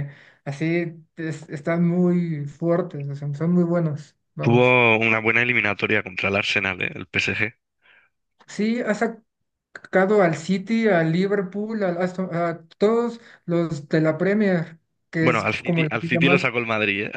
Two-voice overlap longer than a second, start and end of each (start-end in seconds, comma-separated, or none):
15.2-16.4